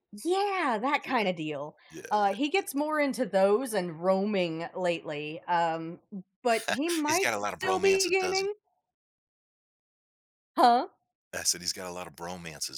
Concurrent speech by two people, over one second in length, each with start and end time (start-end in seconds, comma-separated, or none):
7.1-8.5